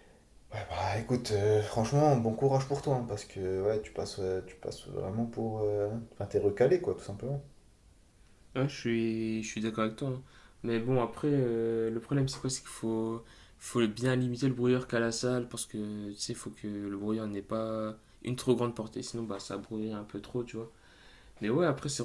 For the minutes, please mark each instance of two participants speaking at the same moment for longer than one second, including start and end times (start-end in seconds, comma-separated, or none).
none